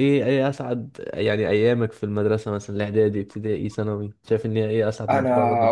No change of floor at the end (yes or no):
no